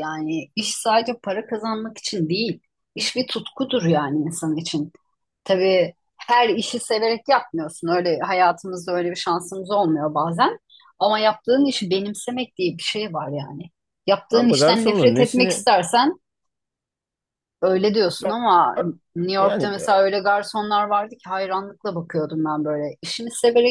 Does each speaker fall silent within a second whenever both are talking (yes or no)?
no